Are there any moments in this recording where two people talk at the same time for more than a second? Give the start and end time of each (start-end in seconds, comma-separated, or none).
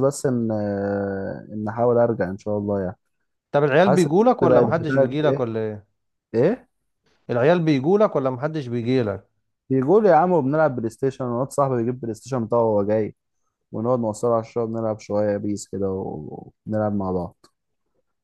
3.8-5.5